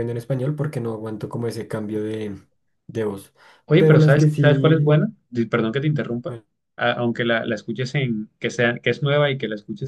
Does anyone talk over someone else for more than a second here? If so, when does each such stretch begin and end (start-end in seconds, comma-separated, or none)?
3.8-5.0